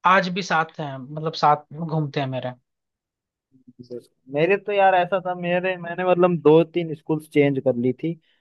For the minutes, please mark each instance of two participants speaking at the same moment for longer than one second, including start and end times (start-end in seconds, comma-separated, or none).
none